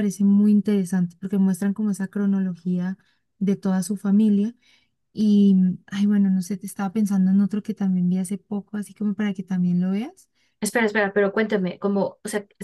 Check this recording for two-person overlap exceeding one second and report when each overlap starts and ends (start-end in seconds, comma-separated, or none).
none